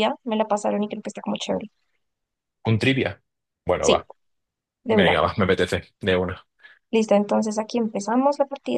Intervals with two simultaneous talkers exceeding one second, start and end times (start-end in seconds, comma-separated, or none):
none